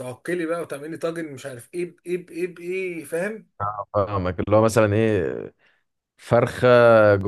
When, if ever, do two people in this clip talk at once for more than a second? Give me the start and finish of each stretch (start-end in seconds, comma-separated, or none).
none